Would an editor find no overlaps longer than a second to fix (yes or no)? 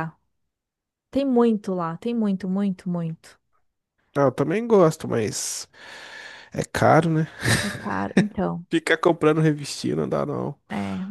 yes